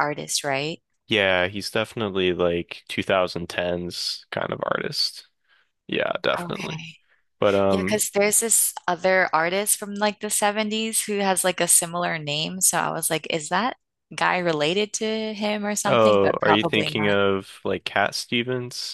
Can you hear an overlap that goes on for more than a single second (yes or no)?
yes